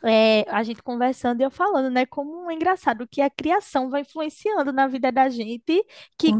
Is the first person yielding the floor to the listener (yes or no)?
no